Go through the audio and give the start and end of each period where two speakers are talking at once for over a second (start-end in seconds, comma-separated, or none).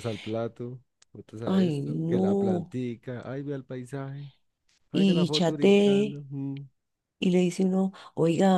1.5-2.8, 4.9-6.2